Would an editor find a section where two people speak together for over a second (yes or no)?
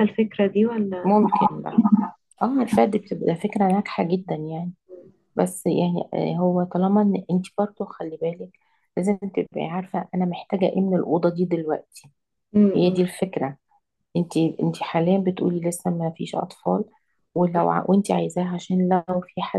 no